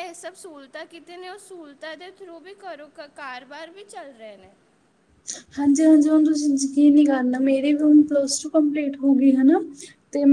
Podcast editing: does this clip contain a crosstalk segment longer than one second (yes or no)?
no